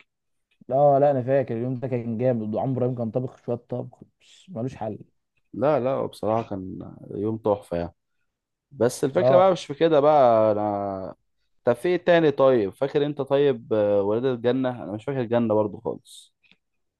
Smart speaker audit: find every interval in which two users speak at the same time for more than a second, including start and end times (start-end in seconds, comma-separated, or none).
none